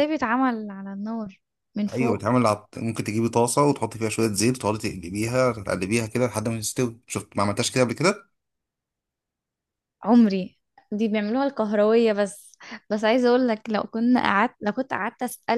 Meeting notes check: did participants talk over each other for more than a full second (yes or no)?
no